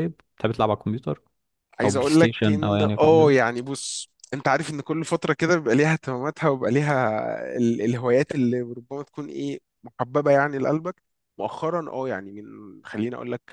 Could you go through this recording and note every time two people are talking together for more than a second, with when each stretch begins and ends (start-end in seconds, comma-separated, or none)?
1.8-3.3